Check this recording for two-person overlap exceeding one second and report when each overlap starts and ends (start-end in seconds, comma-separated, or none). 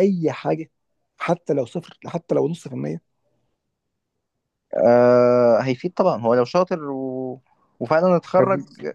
none